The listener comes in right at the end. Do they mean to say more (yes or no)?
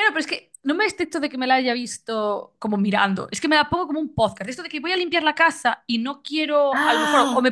no